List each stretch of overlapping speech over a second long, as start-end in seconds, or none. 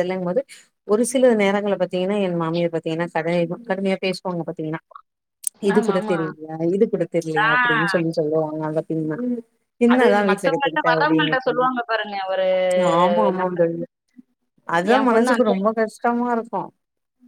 9.9-11.7